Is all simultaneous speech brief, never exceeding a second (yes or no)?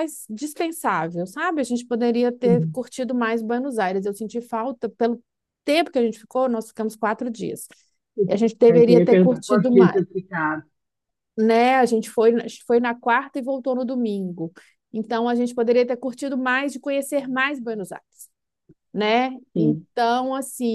no